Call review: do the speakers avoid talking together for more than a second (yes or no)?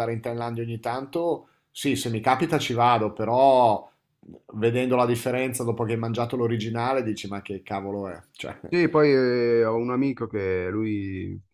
yes